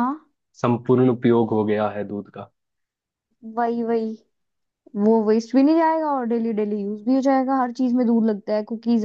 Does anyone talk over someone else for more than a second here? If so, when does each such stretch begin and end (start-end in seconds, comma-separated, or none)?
none